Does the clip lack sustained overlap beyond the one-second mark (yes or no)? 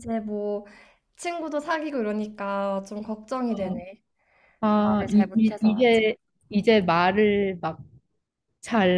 no